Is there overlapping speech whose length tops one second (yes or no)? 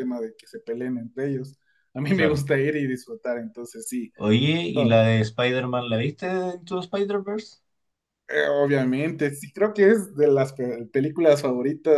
no